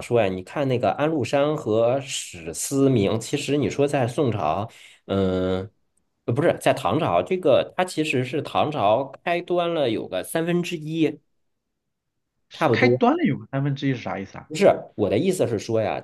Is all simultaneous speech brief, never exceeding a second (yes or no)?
yes